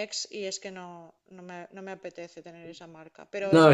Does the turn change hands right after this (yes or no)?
no